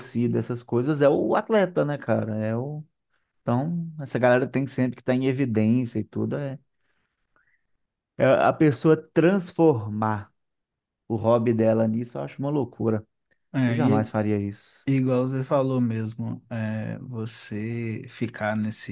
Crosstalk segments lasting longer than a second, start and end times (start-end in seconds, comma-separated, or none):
none